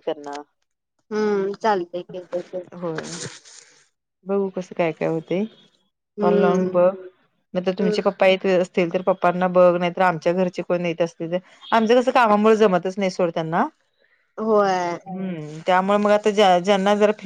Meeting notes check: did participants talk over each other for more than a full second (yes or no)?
no